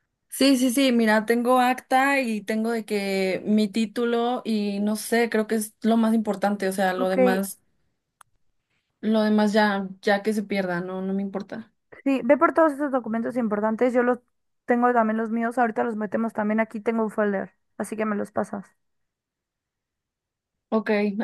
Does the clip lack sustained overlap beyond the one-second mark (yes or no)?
yes